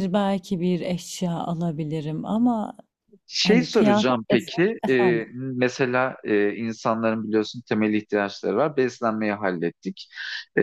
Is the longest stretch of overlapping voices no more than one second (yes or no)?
no